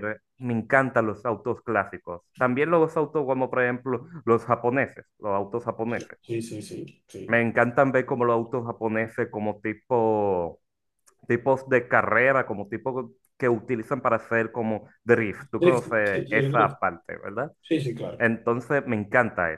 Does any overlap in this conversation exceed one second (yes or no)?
yes